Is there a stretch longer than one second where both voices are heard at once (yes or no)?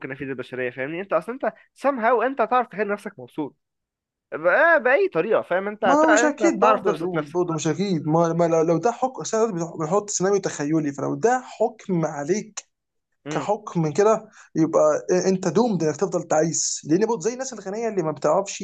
yes